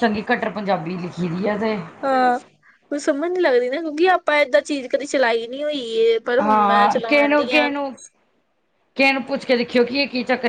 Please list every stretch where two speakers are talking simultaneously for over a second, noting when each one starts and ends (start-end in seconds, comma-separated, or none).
6.4-7.9